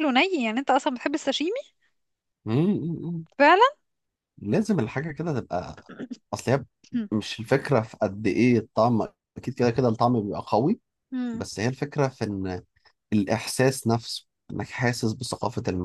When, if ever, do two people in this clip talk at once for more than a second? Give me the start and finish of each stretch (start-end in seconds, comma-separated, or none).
none